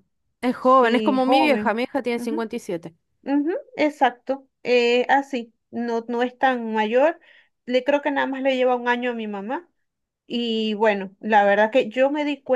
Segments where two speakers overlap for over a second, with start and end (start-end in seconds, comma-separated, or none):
0.6-2.5